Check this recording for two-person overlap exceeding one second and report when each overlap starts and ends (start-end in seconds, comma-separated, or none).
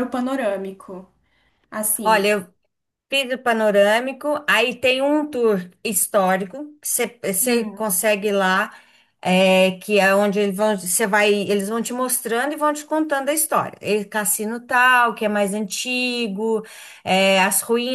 none